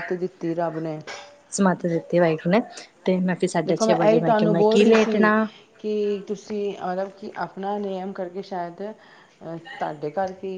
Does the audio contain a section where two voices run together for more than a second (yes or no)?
yes